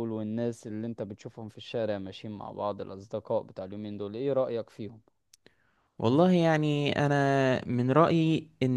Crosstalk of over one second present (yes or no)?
no